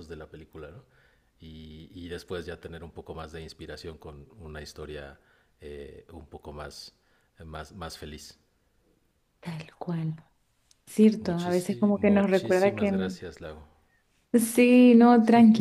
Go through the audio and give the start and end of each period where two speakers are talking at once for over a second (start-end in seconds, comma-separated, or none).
11.2-13.2